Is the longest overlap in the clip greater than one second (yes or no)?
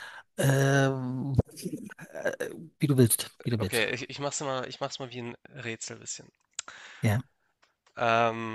no